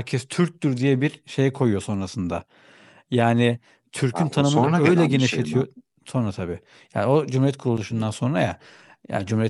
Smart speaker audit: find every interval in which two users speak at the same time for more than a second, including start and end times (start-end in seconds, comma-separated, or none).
4.1-5.6